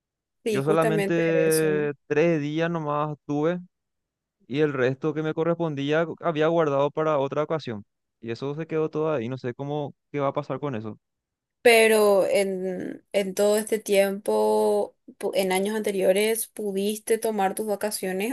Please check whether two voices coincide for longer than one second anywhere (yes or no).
yes